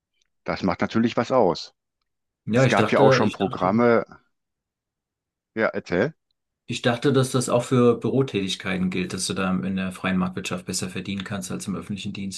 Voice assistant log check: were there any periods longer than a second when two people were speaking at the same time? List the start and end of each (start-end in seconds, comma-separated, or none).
2.5-3.8